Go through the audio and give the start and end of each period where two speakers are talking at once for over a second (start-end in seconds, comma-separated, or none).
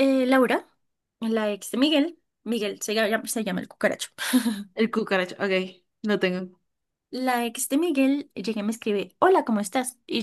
none